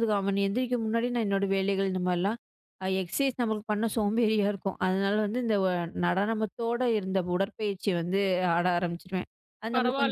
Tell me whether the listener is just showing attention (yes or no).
no